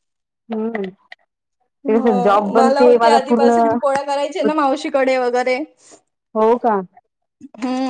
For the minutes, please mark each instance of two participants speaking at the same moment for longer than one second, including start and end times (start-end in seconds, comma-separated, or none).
1.9-3.6